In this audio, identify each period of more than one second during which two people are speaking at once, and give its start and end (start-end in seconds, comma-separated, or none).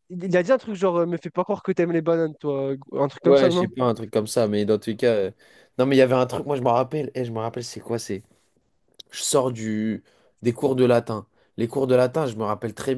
none